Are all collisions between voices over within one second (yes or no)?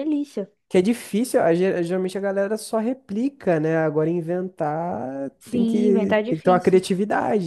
no